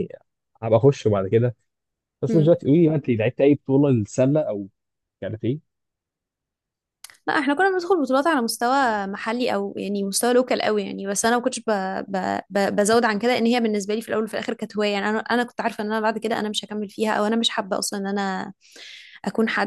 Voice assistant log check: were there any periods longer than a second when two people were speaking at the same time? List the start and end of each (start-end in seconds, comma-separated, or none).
none